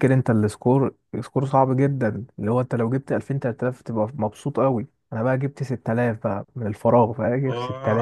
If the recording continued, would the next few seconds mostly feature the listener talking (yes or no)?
no